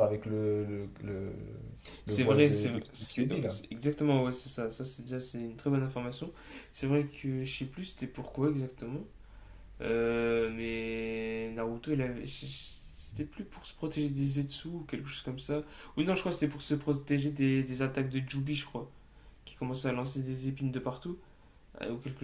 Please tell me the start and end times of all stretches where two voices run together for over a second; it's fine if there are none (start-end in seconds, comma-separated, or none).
2.0-3.6